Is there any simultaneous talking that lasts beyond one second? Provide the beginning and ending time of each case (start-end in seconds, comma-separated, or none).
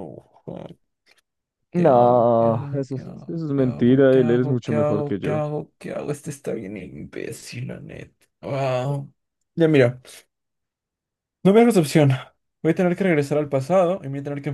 1.7-5.4